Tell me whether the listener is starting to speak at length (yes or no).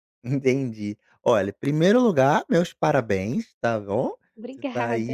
no